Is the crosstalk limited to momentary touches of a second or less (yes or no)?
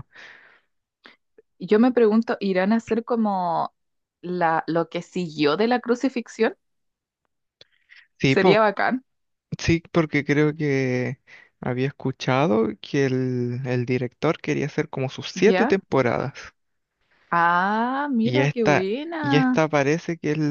no